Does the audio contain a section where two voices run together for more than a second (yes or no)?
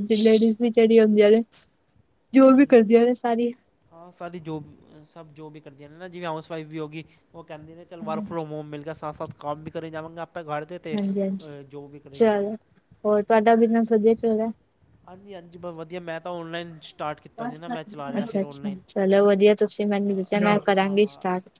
no